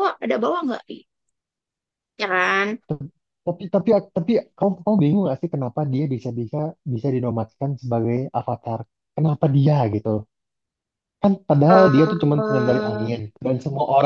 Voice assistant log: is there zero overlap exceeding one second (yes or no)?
no